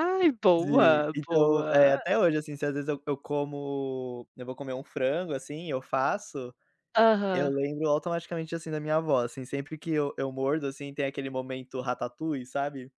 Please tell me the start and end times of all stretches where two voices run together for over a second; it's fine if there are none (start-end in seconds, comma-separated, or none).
0.6-2.0